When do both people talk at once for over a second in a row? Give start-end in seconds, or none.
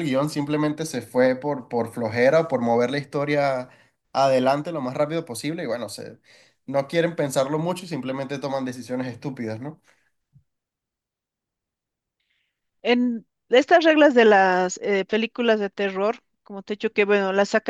none